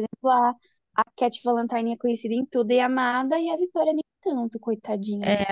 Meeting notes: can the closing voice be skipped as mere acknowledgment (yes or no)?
no